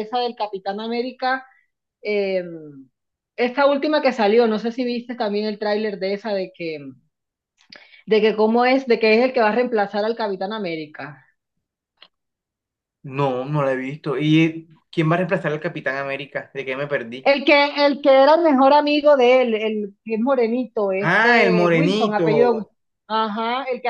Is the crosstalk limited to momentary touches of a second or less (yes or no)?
no